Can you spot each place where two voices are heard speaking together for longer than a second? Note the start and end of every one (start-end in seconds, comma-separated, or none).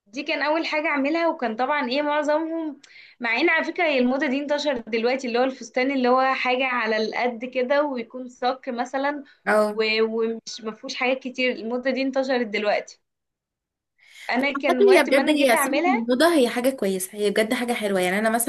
14.4-16.1